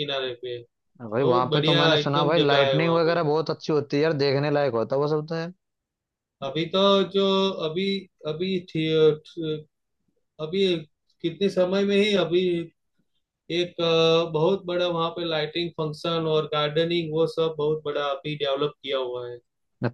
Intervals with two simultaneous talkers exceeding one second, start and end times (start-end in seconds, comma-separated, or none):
1.2-3.2